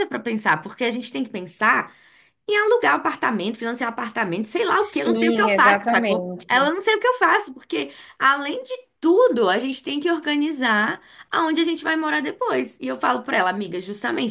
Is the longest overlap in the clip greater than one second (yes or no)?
yes